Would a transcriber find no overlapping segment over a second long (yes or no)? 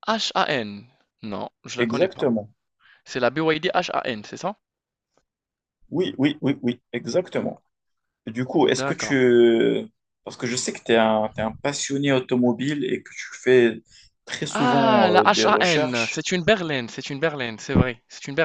no